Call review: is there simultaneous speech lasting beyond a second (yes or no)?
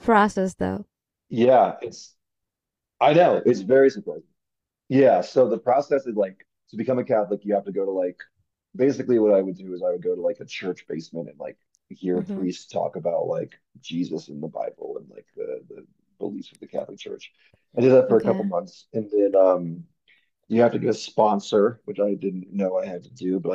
no